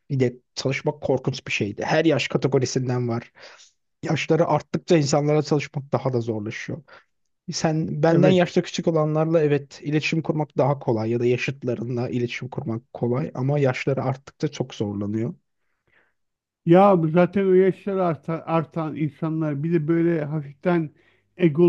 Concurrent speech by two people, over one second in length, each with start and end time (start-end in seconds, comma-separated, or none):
none